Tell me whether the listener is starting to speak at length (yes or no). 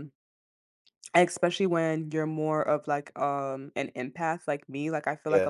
no